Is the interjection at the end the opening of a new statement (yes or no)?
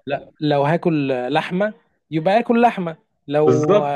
no